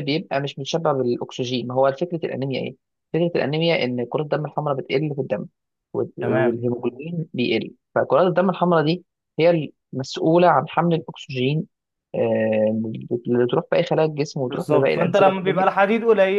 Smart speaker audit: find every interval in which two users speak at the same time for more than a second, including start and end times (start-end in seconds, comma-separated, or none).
14.4-15.8